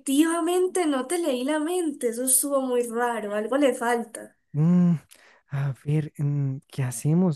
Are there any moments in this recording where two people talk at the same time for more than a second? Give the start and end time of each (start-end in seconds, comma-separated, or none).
none